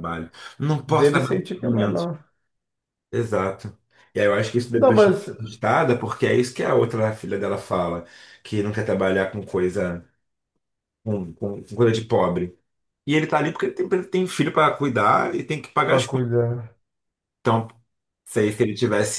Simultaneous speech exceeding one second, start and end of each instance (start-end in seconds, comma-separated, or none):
0.9-2.1